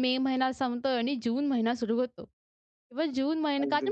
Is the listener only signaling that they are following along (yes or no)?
yes